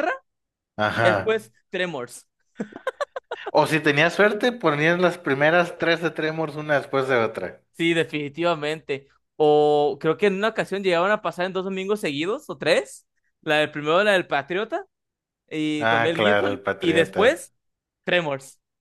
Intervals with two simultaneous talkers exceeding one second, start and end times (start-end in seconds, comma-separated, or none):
15.8-17.5